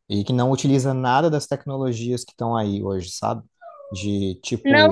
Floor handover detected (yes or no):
yes